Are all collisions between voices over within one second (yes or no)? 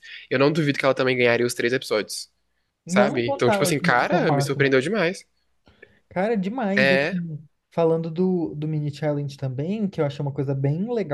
no